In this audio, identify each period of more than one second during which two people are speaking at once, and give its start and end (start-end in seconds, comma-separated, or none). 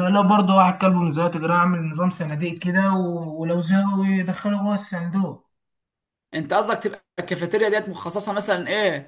none